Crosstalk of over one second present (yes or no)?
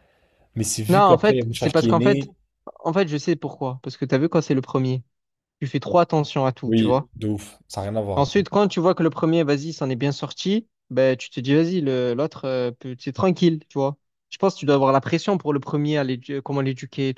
yes